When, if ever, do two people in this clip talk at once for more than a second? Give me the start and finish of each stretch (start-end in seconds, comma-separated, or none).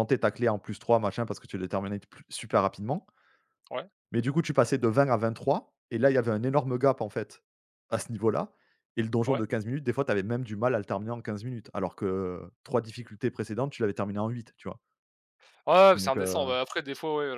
none